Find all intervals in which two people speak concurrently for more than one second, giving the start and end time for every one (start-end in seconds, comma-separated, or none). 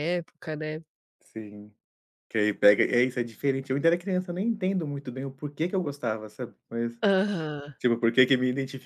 none